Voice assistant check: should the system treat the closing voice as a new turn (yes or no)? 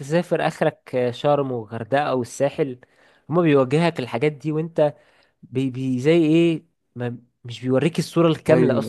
yes